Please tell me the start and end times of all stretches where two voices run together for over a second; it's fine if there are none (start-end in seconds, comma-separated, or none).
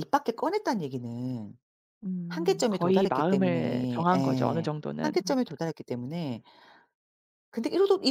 2.3-5.1